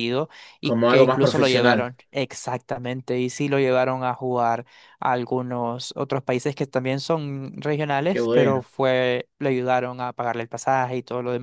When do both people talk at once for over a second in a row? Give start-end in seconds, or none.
0.6-1.9